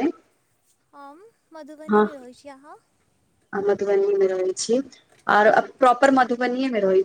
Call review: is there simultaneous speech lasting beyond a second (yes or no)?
no